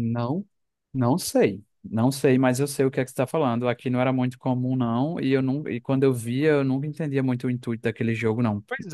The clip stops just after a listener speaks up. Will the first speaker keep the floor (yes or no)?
no